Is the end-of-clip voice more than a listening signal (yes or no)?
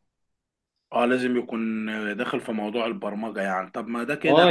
yes